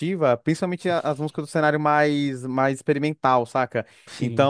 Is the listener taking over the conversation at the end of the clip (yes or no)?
no